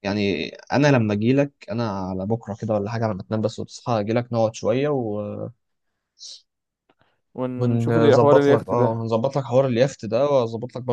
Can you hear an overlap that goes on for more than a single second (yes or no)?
yes